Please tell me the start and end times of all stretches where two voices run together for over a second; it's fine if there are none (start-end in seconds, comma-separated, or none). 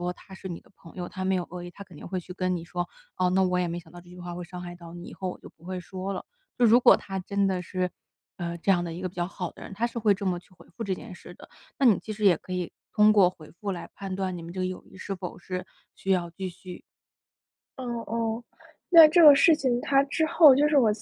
none